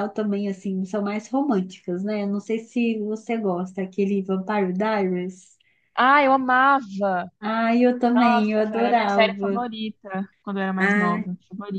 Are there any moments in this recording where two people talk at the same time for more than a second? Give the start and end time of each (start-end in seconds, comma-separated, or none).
8.1-9.7